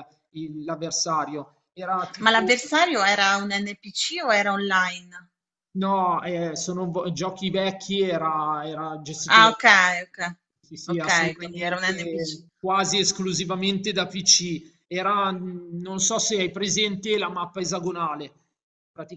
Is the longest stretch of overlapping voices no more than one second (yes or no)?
no